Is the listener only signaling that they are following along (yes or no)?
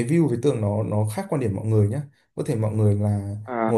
yes